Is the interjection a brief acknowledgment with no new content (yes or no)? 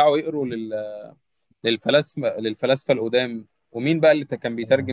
yes